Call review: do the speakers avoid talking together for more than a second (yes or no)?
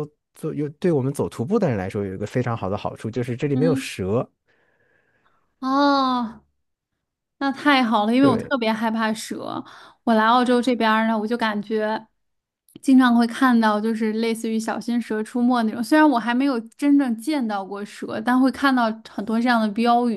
yes